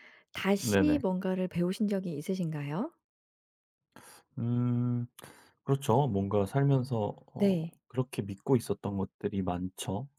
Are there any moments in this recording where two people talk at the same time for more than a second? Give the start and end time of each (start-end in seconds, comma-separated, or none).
none